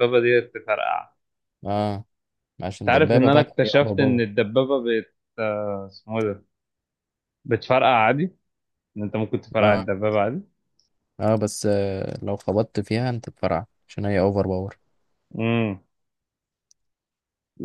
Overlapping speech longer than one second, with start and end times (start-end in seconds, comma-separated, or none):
2.8-4.3